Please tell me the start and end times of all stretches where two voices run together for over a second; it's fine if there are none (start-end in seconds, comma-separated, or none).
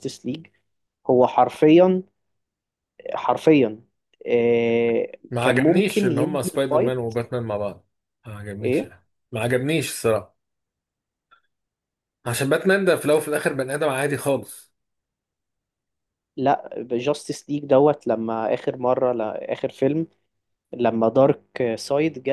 5.3-7.1